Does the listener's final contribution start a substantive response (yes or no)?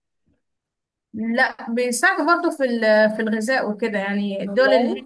no